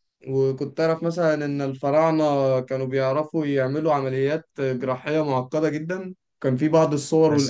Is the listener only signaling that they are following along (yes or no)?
yes